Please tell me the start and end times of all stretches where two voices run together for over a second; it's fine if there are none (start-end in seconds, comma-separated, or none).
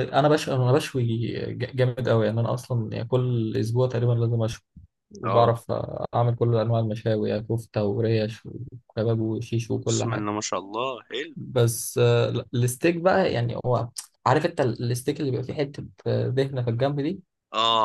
none